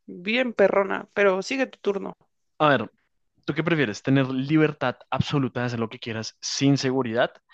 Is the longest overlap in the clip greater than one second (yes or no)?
no